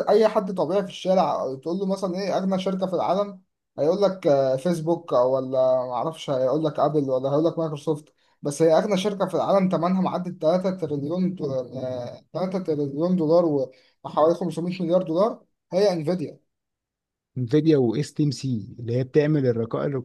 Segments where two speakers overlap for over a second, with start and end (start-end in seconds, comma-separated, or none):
none